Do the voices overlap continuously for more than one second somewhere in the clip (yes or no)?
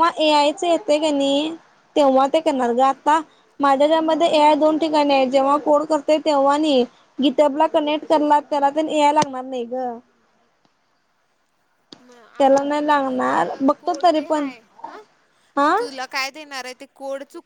yes